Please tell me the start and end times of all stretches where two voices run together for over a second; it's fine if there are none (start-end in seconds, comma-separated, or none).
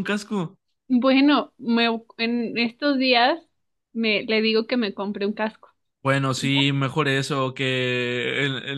none